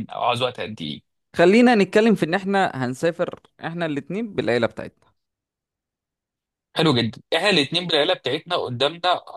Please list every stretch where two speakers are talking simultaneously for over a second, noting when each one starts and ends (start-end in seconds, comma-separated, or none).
none